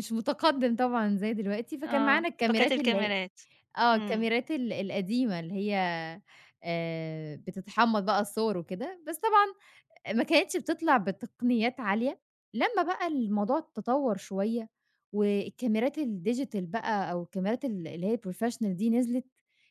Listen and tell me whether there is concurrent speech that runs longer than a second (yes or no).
yes